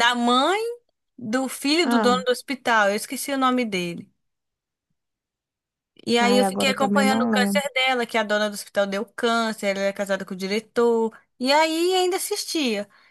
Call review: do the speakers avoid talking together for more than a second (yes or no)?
no